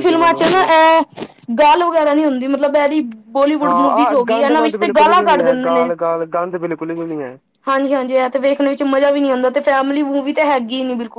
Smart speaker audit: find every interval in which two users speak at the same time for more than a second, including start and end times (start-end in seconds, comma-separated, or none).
3.6-5.9